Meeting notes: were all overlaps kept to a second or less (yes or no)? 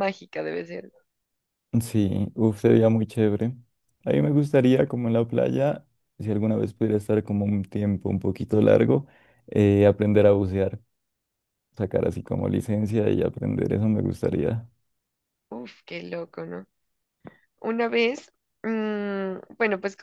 yes